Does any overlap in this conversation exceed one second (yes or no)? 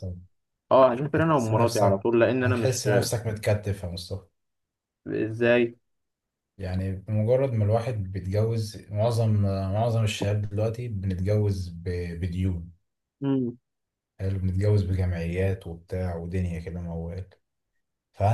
yes